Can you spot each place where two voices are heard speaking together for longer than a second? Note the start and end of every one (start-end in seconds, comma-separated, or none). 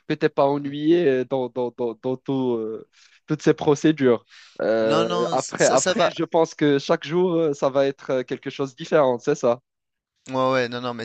4.8-6.1